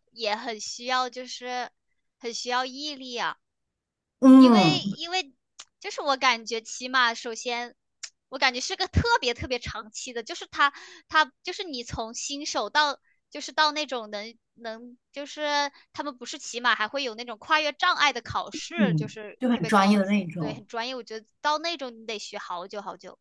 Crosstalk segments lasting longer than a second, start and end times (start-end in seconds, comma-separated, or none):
18.8-20.6